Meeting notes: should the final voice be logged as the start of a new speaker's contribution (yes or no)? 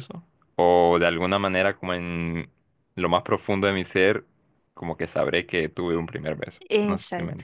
yes